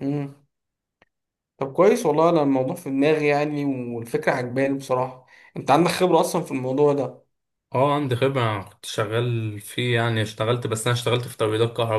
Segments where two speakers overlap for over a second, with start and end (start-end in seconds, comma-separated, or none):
none